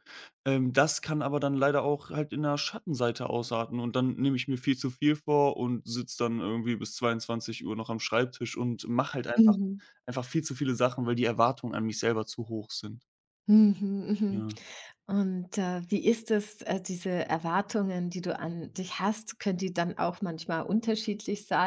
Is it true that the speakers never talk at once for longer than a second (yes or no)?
yes